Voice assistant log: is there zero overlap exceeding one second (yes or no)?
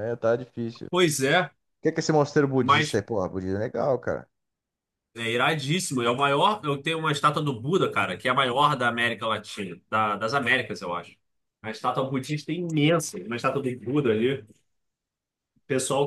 yes